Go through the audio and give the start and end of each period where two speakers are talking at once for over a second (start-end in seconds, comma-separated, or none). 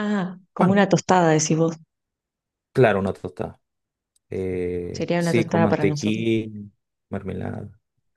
4.9-6.2